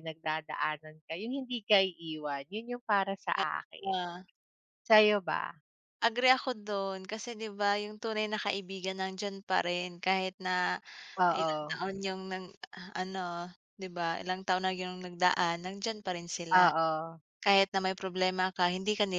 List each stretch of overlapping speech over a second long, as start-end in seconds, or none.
none